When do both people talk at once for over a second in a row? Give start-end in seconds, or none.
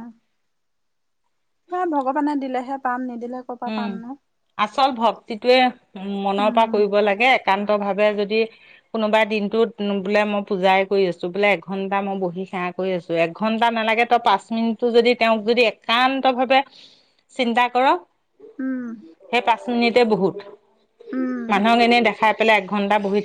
none